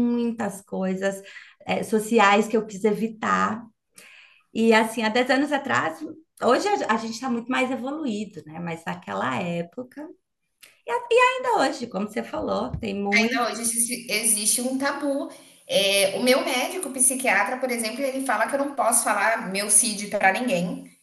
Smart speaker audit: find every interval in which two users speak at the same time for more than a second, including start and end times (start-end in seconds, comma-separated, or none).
none